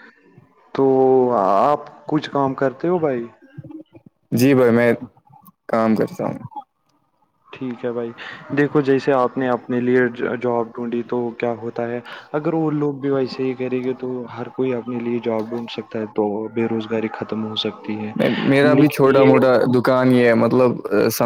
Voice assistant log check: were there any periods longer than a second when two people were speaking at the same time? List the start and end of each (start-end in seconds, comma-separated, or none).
none